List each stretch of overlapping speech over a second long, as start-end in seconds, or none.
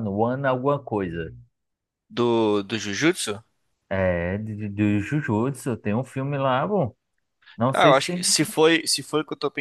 none